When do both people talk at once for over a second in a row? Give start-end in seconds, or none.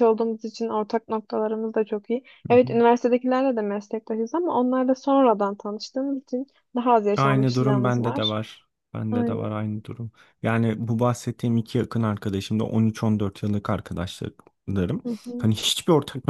7.2-8.4